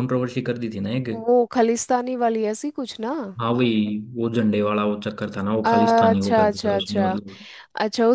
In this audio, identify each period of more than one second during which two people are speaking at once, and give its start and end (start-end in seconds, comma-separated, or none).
5.7-7.1